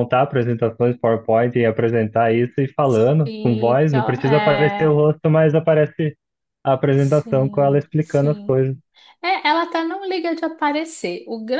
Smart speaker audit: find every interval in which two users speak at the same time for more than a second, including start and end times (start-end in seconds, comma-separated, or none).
3.2-4.9, 6.9-8.6